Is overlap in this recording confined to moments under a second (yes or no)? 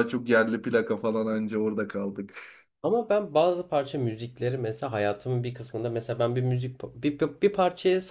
yes